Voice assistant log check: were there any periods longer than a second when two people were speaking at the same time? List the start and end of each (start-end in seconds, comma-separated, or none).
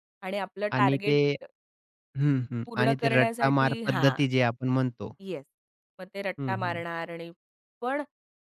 2.7-4.2